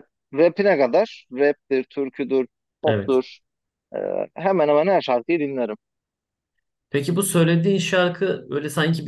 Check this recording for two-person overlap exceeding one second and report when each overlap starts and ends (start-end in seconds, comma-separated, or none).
none